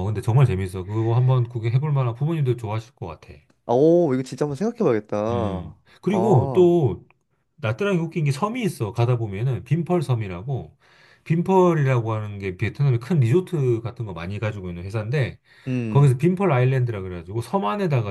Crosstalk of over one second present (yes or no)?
yes